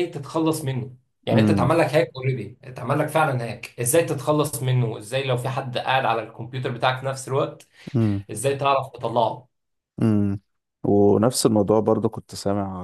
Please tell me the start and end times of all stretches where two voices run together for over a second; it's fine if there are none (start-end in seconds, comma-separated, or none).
none